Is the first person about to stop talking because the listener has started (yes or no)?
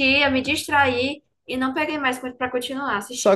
yes